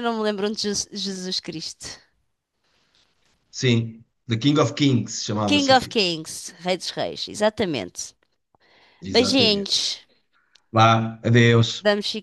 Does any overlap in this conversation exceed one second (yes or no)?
no